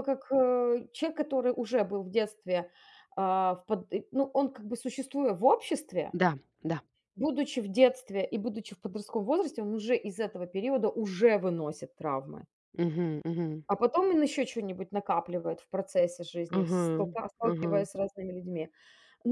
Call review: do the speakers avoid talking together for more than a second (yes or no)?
yes